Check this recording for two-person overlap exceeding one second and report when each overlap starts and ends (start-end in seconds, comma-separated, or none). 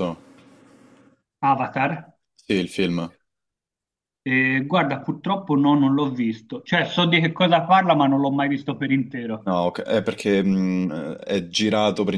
none